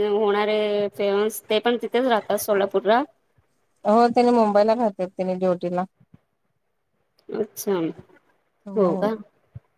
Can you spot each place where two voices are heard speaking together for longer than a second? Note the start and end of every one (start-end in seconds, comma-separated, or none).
none